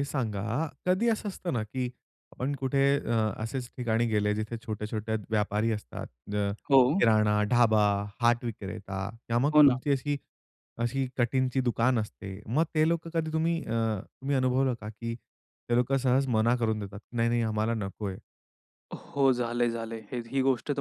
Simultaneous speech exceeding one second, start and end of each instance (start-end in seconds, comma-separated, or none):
none